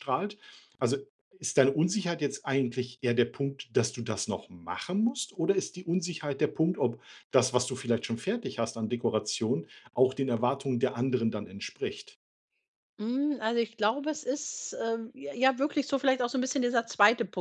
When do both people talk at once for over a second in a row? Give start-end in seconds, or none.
none